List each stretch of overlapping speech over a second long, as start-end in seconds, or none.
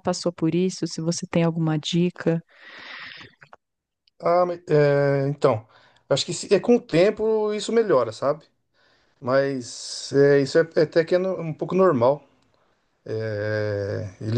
none